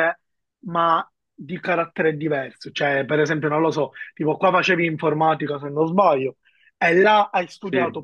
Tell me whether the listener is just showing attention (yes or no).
yes